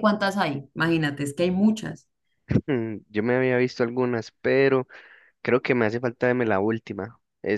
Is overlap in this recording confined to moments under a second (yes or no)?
yes